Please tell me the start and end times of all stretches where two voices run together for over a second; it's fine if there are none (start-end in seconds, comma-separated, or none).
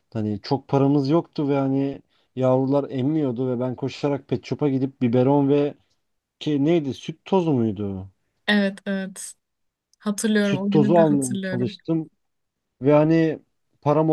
10.4-11.8